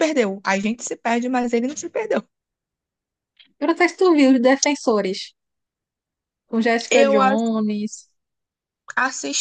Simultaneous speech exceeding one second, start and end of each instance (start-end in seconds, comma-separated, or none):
none